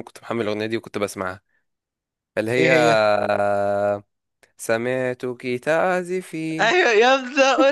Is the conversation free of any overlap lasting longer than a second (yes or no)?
yes